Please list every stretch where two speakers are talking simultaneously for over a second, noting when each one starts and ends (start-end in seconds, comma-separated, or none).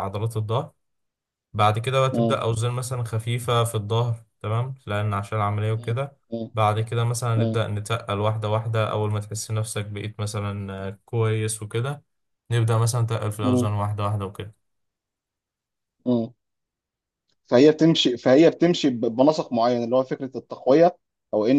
none